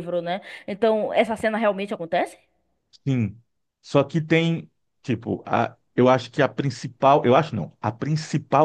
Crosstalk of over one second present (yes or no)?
no